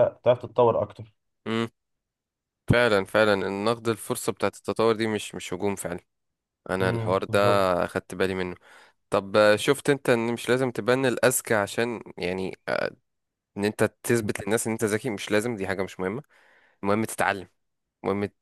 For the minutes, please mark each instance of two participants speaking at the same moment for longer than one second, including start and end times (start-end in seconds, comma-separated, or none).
none